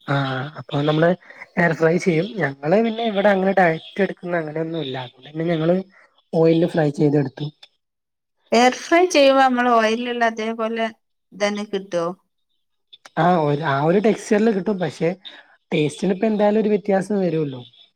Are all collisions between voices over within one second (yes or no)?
yes